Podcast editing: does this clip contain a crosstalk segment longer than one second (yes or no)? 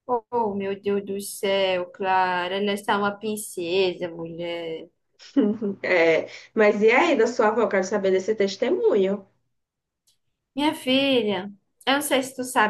no